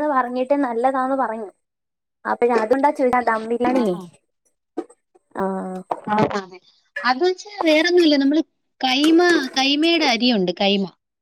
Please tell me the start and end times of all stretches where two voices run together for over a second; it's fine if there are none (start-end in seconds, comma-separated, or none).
none